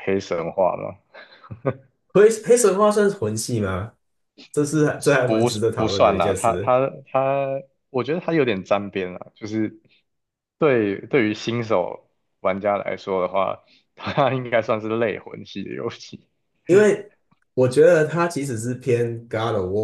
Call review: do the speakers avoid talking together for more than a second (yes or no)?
no